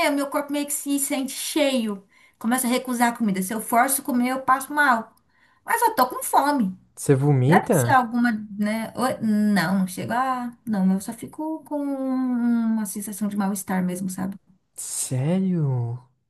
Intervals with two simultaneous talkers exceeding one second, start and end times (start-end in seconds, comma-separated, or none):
none